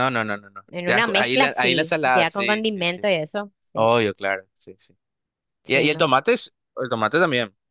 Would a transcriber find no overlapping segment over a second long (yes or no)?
no